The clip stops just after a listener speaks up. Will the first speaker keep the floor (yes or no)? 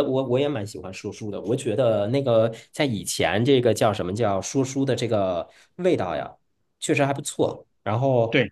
no